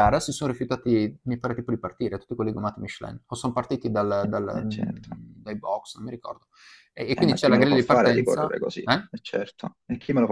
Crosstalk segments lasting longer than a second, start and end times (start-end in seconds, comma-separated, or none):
7.1-9.1